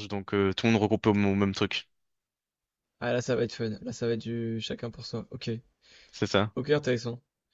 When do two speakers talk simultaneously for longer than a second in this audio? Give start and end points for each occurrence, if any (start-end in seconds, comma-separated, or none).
none